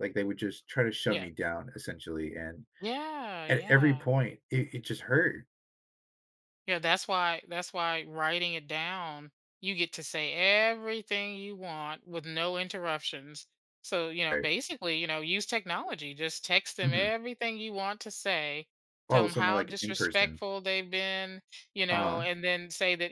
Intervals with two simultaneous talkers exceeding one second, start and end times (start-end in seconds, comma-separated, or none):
19.1-20.4